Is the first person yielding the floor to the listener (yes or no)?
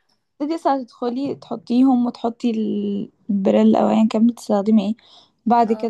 no